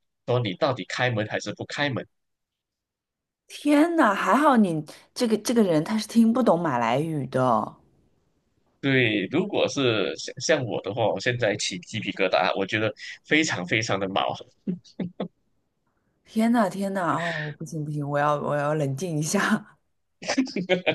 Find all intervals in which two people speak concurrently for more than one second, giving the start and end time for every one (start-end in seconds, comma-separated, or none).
none